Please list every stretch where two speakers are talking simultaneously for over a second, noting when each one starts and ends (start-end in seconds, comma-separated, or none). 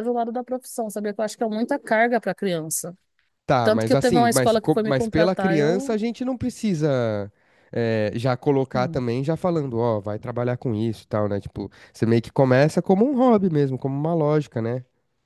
3.6-6.0